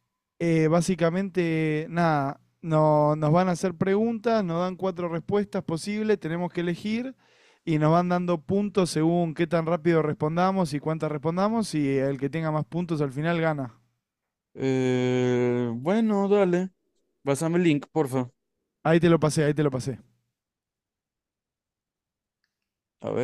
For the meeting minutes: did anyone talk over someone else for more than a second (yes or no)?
no